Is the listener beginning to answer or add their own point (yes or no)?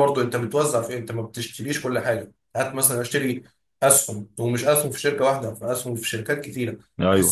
no